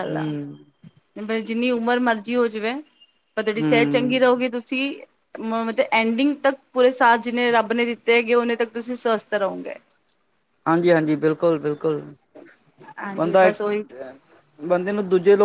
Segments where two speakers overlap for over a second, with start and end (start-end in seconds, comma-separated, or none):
none